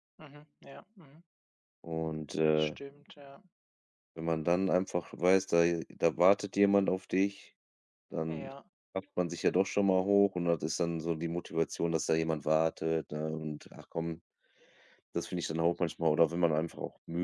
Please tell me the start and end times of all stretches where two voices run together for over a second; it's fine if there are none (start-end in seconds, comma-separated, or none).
none